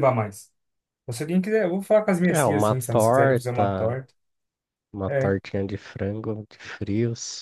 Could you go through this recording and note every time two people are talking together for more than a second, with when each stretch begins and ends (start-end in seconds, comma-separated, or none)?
2.3-4.0